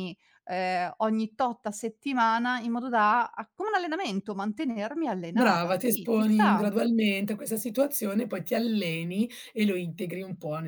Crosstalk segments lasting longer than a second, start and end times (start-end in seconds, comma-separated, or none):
5.3-6.7